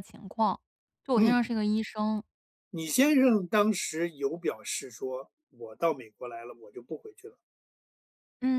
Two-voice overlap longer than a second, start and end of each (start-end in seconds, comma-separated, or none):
none